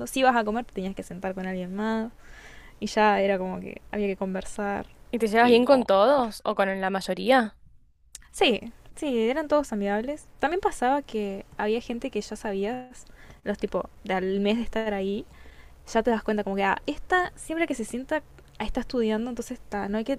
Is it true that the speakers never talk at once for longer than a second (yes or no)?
yes